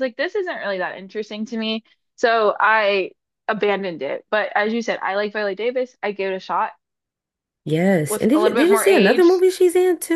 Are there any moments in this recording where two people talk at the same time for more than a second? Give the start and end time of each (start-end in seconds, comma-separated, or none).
8.1-9.4